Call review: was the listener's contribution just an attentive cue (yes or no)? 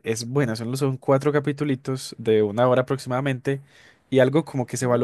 yes